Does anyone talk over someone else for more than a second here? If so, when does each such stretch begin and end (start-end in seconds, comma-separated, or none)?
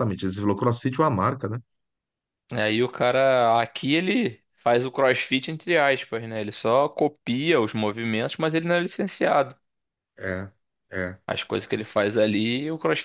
none